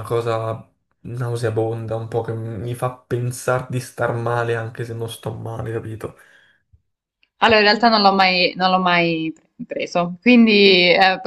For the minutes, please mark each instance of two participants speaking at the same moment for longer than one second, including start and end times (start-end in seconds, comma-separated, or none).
none